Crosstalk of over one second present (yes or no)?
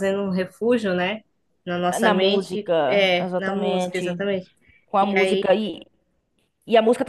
yes